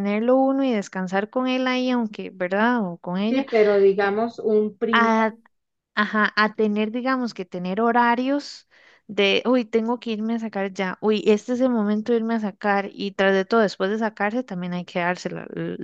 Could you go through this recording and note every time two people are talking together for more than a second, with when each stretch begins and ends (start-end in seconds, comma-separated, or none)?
none